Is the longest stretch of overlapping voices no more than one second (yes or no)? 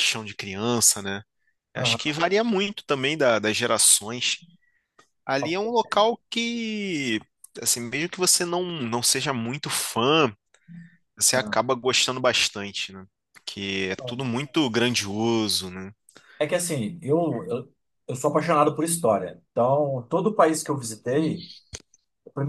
yes